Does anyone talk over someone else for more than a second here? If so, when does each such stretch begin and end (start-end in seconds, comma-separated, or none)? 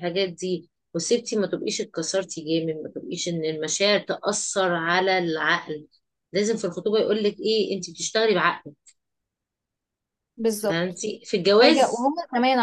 none